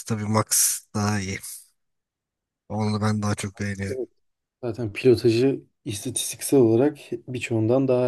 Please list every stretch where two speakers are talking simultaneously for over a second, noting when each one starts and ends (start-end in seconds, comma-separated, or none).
none